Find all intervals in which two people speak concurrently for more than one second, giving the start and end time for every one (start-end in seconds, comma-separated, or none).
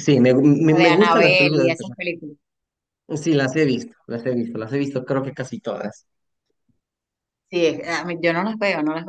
0.7-2.0